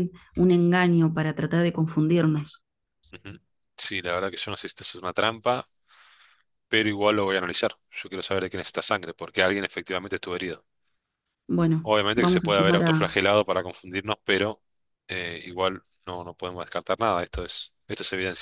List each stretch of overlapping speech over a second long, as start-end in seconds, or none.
11.8-13.2